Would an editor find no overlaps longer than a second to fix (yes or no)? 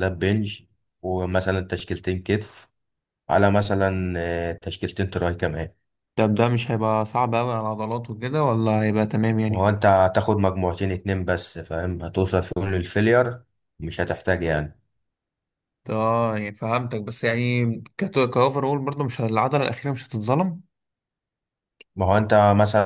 yes